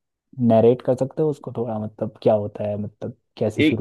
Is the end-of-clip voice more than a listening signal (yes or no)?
yes